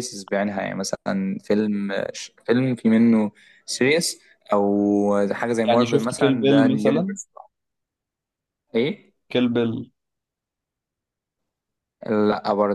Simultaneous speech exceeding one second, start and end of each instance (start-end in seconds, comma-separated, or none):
5.6-7.2